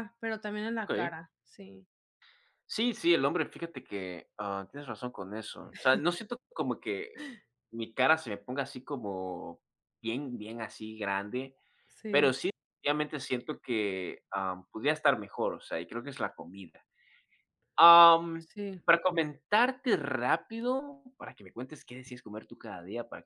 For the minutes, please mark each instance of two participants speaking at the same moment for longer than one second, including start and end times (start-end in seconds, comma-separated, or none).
none